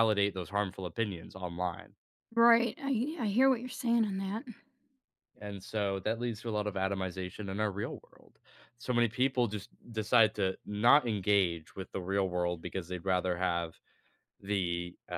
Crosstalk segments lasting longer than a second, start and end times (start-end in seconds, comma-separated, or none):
none